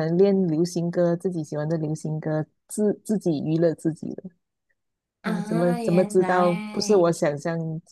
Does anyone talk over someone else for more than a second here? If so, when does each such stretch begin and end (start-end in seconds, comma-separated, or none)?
5.2-7.1